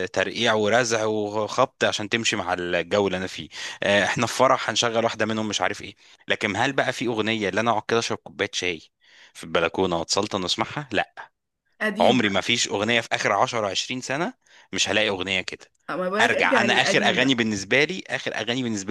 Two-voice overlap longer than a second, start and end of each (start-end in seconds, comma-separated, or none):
16.2-17.5